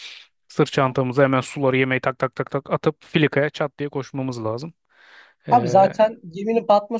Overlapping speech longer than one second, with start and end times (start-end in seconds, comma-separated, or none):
none